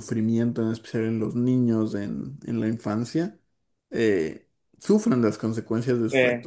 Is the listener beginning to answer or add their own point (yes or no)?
no